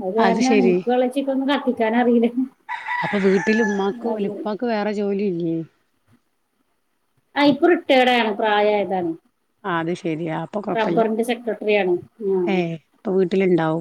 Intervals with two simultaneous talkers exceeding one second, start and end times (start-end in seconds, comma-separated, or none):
none